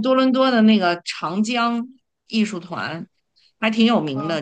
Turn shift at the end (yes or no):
no